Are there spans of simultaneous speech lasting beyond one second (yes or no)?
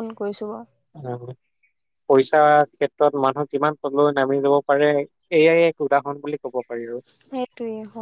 no